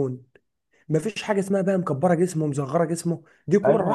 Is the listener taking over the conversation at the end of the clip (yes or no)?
yes